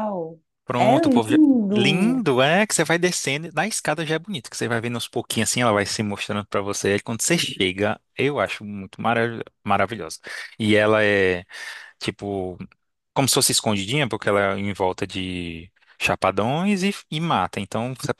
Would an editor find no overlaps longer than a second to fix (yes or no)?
no